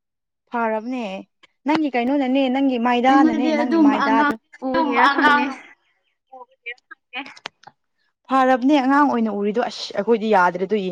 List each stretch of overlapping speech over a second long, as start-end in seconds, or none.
3.1-5.5